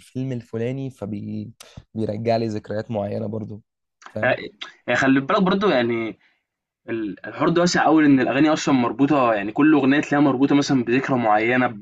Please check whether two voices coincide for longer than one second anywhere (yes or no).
no